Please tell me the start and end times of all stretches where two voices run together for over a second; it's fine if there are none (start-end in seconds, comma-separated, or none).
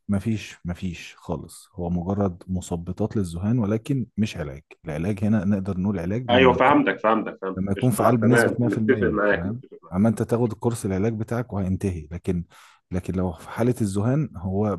7.6-9.9